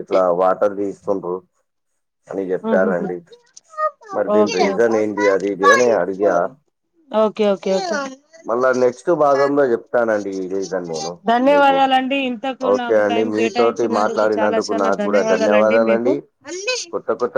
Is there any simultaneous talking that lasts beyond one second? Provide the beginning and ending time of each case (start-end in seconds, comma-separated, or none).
12.7-16.1